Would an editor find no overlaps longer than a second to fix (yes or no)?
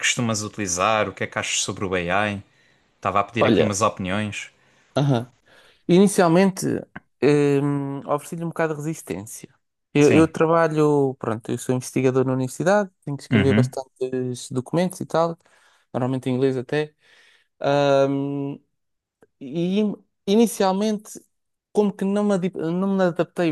yes